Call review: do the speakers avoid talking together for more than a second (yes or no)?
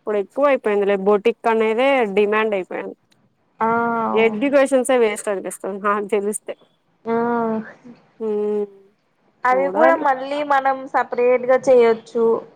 yes